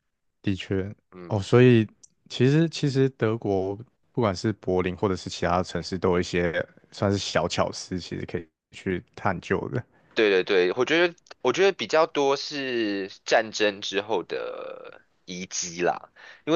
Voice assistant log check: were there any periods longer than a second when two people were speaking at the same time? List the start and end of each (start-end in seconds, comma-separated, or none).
none